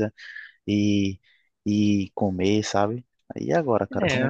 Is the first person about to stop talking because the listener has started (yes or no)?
yes